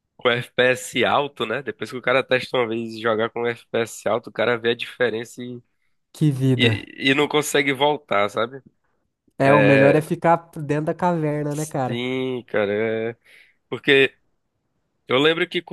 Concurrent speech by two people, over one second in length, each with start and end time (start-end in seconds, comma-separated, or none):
none